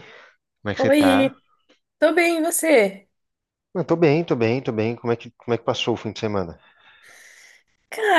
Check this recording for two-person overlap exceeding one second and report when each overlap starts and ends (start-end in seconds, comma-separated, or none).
none